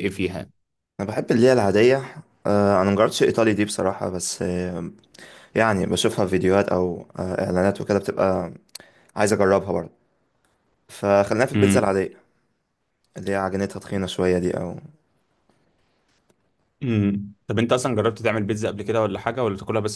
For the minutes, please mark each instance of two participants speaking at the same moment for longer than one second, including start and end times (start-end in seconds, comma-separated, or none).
none